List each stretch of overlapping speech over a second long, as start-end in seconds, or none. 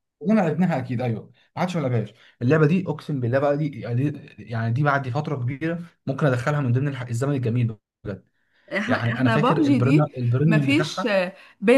8.8-11.1